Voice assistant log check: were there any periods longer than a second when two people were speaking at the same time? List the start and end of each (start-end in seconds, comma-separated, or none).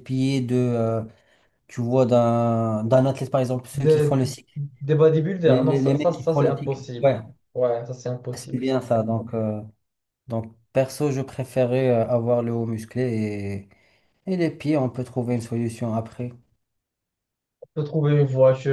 5.5-7.2